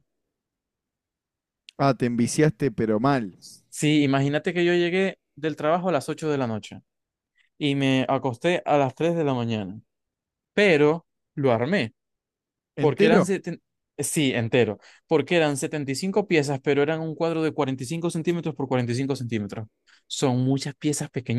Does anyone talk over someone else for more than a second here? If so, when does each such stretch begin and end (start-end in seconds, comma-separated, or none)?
none